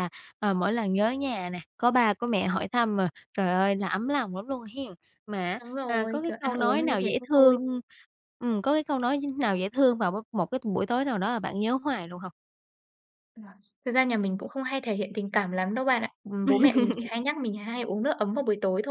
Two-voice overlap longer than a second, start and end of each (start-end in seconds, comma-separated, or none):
5.6-7.6